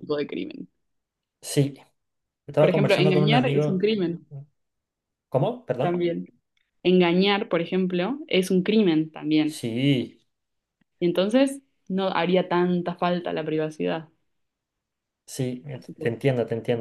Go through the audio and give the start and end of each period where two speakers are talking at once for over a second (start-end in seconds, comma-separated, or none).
2.6-3.9